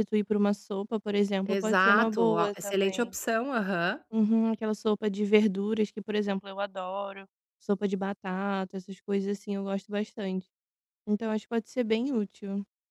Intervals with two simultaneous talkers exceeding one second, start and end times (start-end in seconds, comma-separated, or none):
1.4-3.2